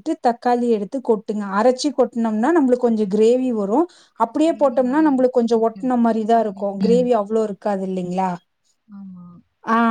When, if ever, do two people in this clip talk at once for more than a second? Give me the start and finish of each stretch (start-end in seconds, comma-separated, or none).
4.5-7.1